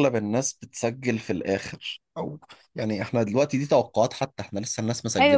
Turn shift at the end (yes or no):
yes